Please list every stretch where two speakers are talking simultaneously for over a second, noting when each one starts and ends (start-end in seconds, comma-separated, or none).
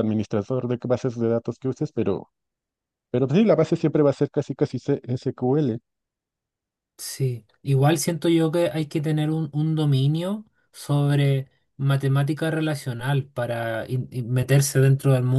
none